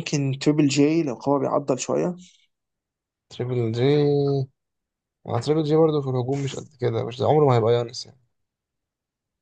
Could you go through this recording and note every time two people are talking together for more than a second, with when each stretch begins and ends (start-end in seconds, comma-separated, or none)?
none